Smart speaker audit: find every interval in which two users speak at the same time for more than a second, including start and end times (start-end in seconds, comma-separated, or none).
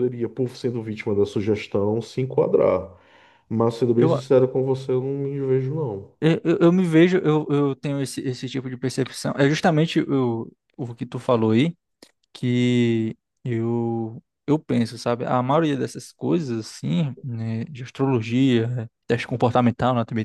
none